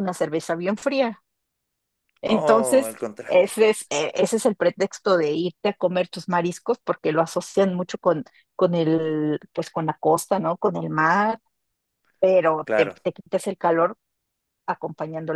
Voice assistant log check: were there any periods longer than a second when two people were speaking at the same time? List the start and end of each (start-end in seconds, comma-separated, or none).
2.2-3.5